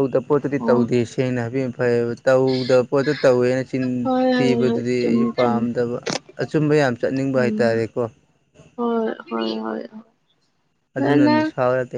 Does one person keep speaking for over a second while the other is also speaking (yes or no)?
yes